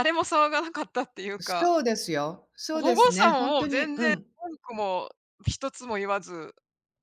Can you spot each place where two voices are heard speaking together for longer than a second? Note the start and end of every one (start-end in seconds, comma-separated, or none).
2.7-4.3